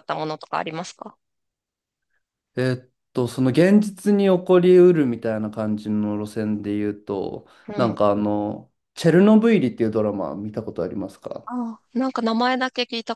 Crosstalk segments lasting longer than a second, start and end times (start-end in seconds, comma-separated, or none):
none